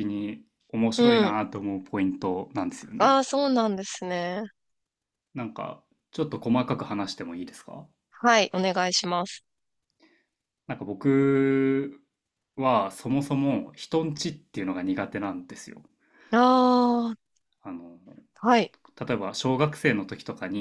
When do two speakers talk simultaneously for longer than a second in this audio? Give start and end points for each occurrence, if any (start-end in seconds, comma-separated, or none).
none